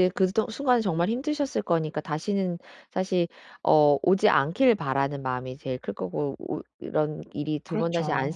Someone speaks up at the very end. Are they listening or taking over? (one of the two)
listening